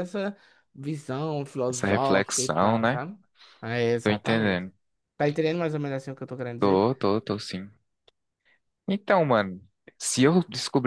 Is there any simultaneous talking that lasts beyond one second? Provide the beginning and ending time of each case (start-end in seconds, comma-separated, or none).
1.7-3.0